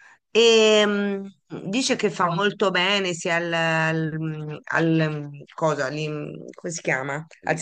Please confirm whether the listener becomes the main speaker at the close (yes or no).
no